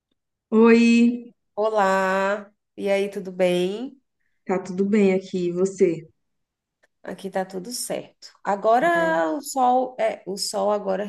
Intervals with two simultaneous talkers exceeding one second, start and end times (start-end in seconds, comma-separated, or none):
none